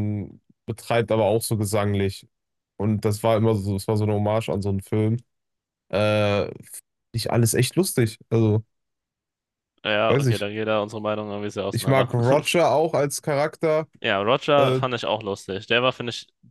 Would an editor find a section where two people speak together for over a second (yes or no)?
no